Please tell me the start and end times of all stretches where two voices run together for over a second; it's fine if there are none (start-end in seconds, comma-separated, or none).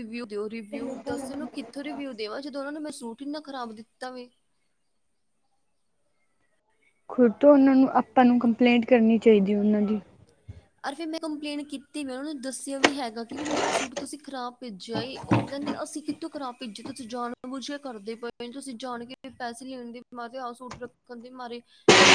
none